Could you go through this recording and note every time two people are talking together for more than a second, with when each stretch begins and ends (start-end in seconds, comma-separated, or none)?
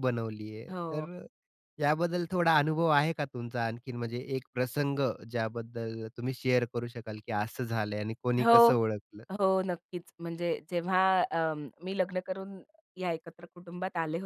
none